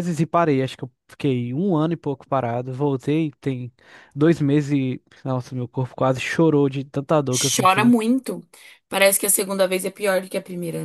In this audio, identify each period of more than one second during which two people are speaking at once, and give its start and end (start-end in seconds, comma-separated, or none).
none